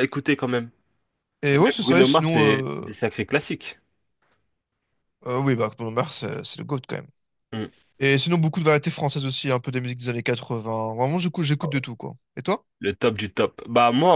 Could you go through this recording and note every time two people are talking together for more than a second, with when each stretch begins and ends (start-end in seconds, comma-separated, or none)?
1.5-2.8